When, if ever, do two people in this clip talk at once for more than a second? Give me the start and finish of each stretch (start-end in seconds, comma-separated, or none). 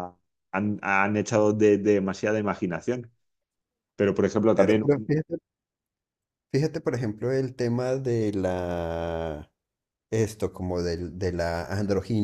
none